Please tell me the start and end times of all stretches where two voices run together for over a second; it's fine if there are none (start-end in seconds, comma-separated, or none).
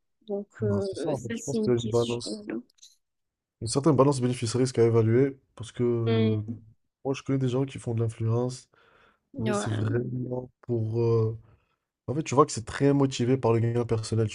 0.6-2.4